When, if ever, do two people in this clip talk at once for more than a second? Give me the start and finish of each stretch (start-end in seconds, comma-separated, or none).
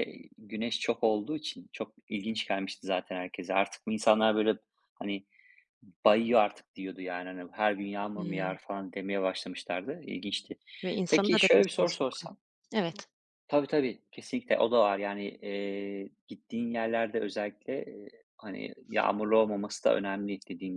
11.1-12.3